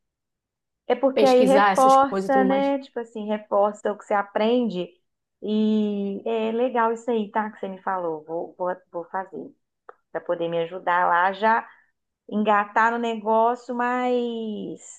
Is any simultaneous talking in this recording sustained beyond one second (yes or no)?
yes